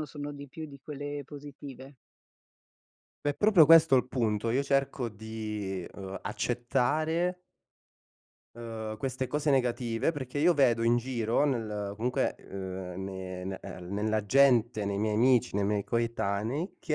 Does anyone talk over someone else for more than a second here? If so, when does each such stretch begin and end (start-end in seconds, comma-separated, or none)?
none